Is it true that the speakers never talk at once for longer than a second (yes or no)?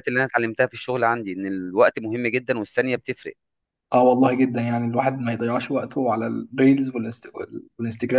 yes